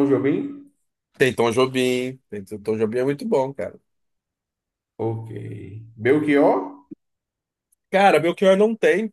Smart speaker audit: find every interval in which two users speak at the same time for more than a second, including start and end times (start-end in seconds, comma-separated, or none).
none